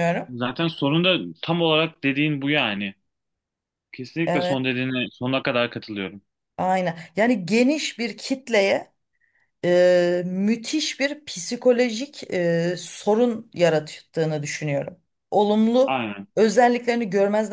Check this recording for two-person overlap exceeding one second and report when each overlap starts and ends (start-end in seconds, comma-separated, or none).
none